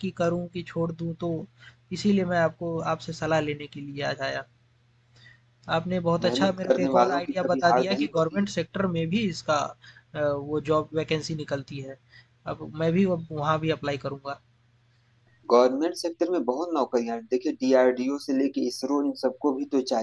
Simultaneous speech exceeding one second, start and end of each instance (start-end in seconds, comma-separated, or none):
6.2-8.5